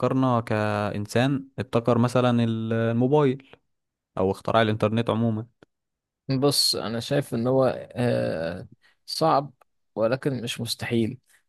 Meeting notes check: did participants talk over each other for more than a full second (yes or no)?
no